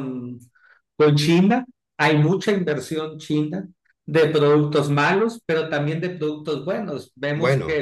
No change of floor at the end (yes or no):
yes